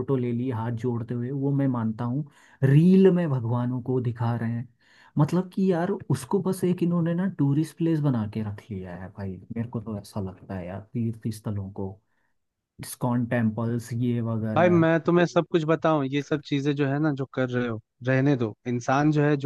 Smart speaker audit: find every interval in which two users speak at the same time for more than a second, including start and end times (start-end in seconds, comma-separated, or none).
none